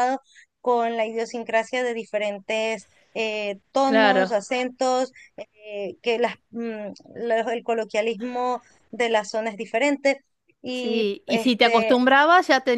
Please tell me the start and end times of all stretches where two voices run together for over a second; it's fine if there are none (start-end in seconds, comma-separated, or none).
10.7-12.0